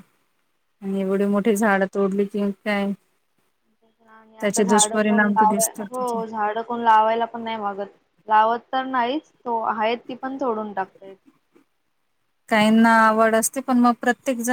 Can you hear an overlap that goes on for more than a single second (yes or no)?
yes